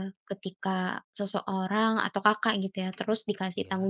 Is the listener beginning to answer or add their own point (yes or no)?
no